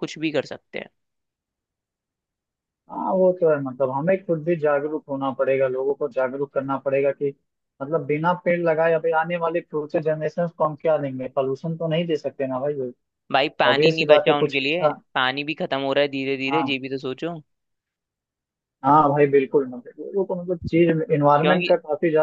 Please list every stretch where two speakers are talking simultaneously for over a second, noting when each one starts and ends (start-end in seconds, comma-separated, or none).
13.7-14.9